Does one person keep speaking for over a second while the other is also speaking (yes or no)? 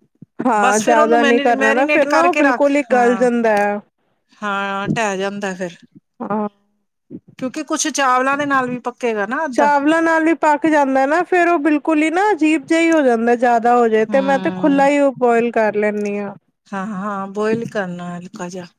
yes